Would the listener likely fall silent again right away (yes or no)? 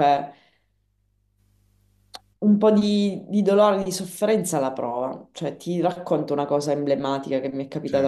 yes